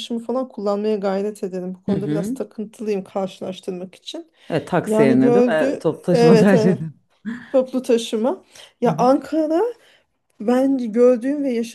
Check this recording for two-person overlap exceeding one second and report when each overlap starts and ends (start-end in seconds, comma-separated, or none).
4.9-6.8